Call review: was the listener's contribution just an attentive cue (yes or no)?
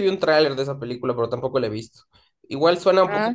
yes